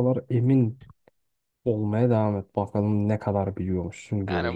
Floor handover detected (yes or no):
yes